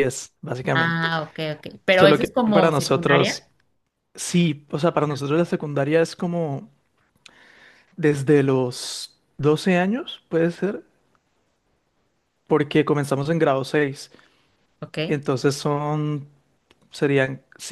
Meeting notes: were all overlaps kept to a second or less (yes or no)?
no